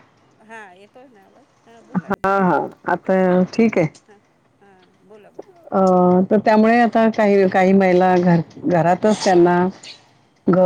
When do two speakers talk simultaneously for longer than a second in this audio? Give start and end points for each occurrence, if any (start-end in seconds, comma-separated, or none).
none